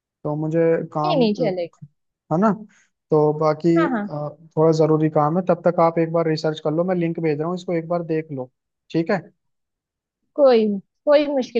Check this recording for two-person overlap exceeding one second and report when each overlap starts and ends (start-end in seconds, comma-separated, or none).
none